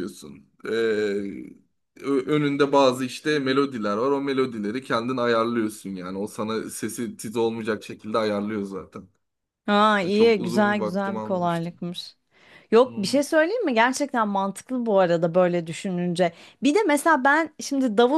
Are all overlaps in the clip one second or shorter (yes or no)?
no